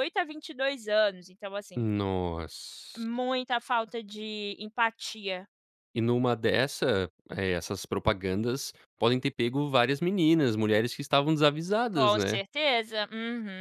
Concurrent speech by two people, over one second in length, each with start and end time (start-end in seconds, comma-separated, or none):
none